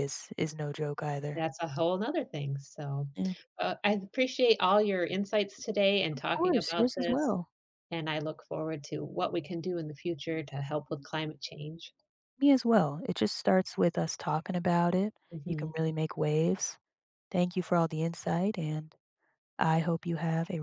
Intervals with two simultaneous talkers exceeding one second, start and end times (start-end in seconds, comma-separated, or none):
6.1-7.3